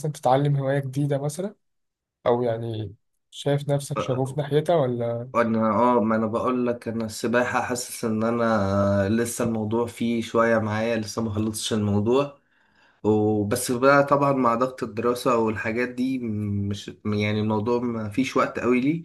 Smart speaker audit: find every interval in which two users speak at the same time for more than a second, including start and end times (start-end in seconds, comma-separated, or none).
none